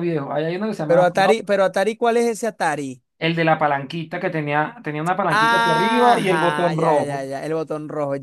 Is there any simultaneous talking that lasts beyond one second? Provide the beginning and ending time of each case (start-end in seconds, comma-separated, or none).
5.3-7.3